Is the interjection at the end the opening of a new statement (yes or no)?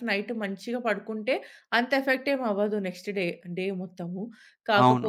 yes